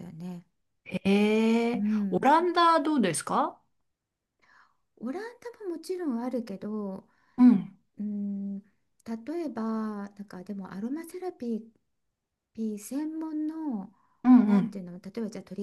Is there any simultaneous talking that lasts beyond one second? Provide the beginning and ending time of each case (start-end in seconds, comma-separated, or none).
none